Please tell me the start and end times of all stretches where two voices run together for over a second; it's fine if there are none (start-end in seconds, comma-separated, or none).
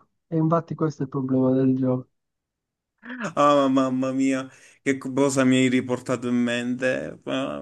none